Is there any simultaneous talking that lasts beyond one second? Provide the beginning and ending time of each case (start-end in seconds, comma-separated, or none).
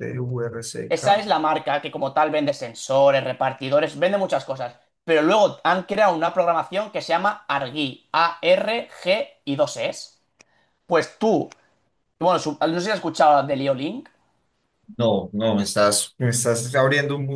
none